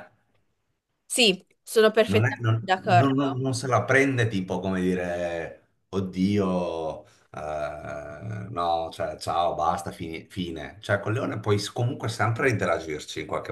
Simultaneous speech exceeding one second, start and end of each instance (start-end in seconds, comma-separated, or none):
2.0-3.4